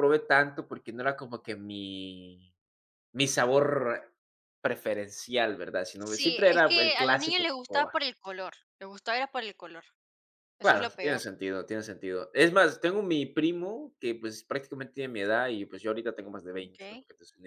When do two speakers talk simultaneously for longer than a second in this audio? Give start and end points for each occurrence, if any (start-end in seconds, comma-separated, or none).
6.1-7.9